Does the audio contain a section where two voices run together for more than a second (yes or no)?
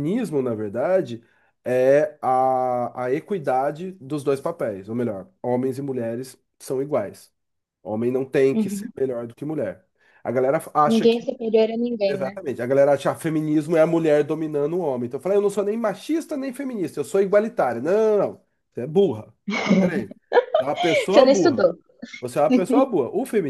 no